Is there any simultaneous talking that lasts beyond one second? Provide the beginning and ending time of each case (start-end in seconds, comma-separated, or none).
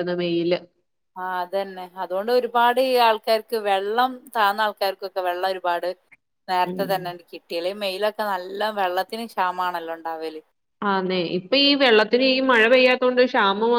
none